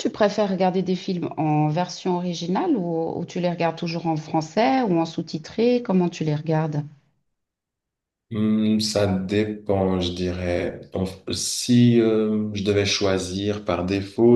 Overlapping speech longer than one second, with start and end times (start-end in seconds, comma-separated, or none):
none